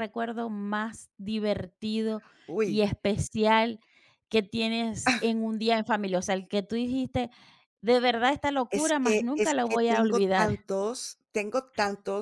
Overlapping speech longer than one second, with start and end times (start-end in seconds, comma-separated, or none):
8.7-10.6